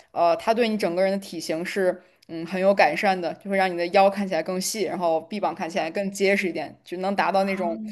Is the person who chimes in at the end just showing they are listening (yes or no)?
yes